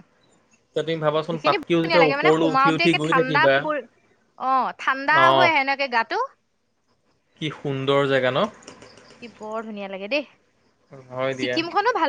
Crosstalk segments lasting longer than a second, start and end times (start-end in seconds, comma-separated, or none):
1.3-3.5